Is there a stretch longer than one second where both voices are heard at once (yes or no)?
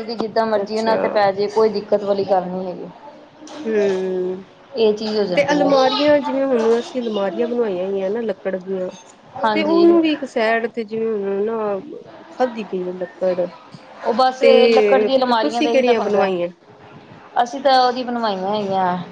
yes